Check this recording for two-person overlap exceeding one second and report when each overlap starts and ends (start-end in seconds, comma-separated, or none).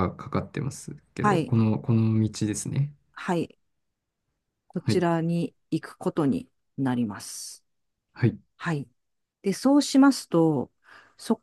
none